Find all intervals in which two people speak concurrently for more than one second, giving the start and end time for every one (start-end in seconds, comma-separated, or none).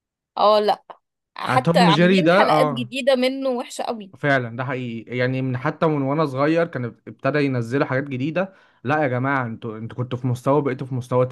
1.5-2.9